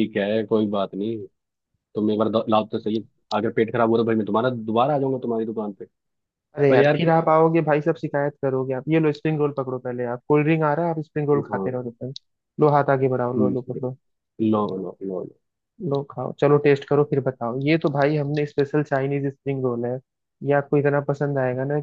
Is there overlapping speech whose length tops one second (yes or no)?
no